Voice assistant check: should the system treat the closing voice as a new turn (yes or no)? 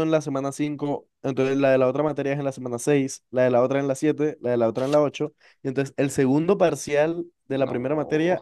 no